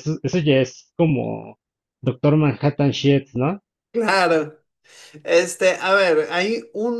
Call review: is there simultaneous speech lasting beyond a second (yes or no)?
no